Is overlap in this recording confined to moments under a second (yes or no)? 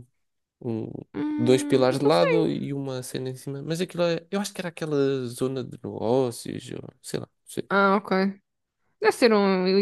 no